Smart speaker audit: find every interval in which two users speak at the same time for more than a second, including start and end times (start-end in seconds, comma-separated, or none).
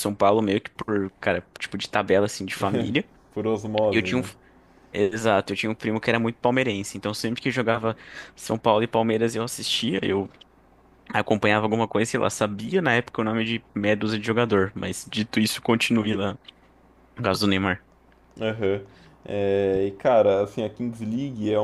none